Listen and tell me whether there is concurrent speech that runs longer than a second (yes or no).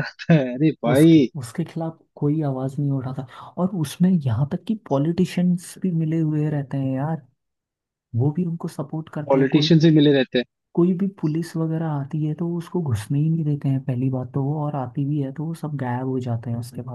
no